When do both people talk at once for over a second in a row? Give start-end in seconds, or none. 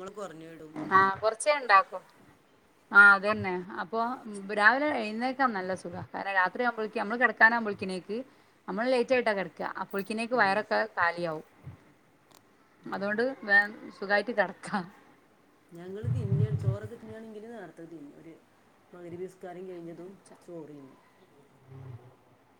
none